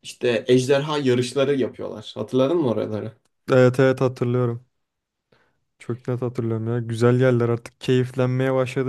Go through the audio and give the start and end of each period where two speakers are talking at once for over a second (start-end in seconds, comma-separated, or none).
none